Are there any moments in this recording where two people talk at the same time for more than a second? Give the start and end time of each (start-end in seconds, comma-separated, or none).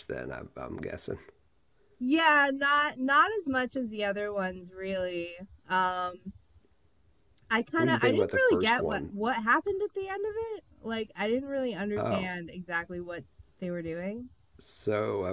7.8-9.1